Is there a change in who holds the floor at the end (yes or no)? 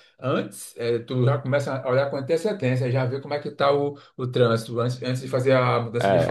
yes